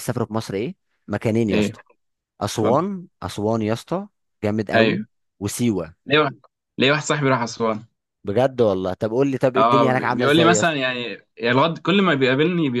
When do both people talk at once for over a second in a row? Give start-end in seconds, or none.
9.6-10.8